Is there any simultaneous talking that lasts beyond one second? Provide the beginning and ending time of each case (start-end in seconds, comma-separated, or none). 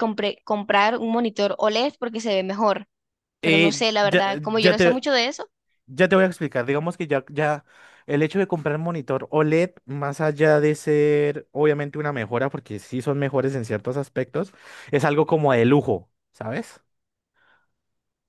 3.4-5.0